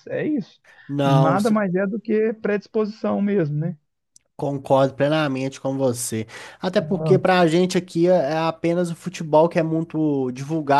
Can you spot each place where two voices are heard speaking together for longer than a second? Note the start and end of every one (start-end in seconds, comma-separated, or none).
none